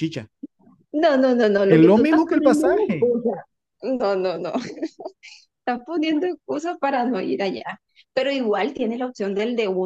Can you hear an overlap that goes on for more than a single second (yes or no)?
yes